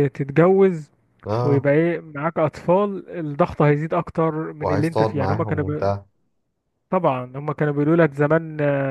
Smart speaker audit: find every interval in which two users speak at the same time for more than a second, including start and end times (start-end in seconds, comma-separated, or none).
4.6-5.9